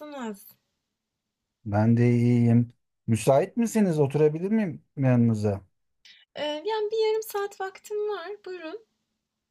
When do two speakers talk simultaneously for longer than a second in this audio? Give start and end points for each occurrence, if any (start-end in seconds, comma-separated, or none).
none